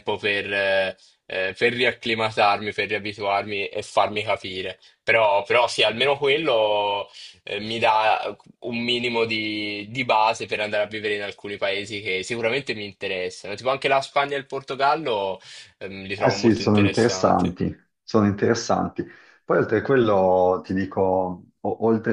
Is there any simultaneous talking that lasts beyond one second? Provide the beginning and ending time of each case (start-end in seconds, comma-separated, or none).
16.2-17.5